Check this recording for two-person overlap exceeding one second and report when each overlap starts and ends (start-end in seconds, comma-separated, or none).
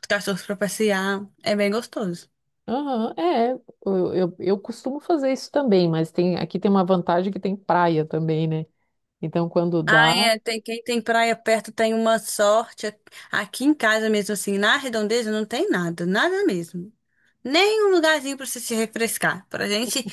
none